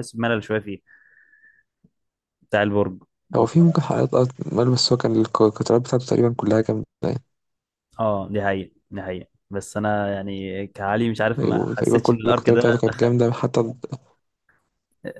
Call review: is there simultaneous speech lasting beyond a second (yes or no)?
yes